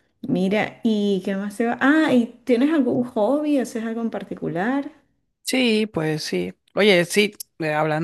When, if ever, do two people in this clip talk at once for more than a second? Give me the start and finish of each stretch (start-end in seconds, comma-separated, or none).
none